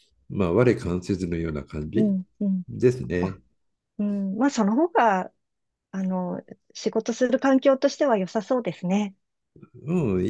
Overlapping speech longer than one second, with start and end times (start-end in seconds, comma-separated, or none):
none